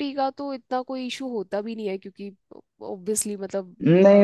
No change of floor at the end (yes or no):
no